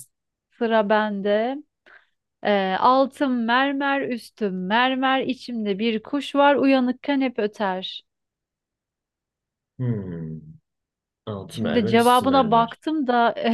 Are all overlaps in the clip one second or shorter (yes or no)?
no